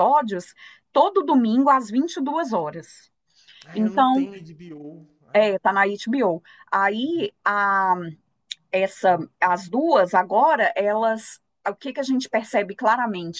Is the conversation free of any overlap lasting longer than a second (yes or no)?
yes